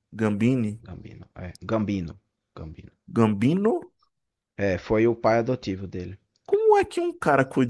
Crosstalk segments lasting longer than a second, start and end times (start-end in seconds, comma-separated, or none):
none